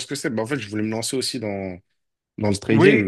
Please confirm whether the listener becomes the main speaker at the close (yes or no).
no